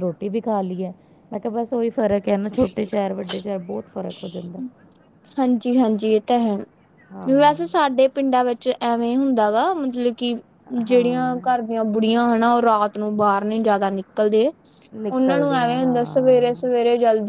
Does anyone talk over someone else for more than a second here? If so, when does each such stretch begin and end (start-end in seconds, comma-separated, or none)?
15.1-16.4